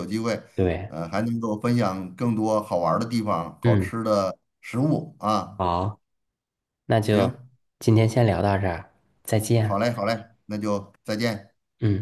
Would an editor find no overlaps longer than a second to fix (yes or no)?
yes